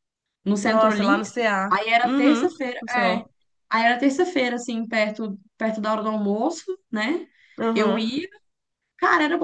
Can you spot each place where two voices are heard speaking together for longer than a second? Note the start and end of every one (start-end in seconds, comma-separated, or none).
0.6-3.2